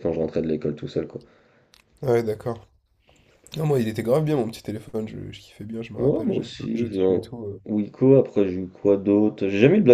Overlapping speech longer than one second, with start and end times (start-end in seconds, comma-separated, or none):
6.0-7.2